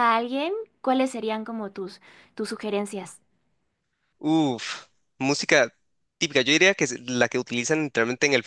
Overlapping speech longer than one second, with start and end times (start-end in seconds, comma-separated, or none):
none